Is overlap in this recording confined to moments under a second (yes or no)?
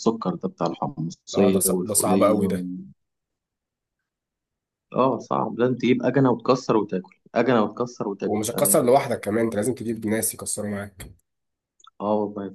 no